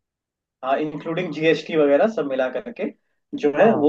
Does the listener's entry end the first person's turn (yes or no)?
no